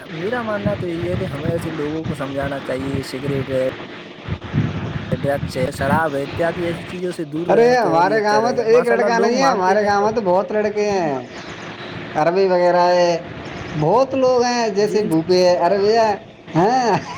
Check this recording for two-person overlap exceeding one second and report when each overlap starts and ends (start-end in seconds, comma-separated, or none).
7.5-10.1